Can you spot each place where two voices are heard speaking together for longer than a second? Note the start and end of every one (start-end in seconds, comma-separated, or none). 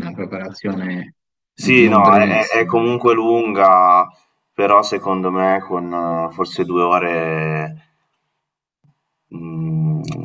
1.6-3.2